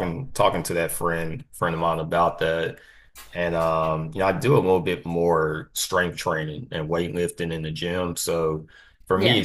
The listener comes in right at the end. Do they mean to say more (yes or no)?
no